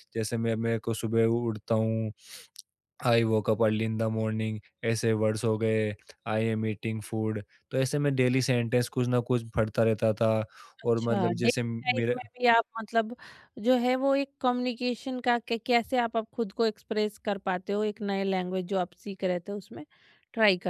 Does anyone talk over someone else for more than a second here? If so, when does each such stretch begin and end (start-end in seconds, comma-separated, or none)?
10.8-12.2